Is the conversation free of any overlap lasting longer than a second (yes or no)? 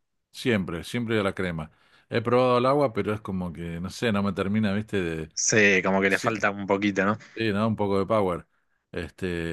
yes